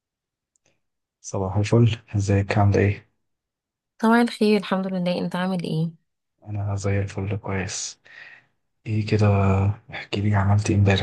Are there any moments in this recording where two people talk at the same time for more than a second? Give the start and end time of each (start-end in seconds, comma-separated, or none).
none